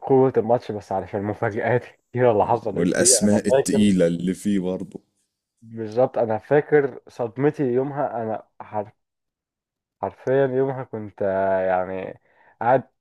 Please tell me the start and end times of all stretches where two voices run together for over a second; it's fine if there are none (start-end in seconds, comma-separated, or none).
2.4-3.9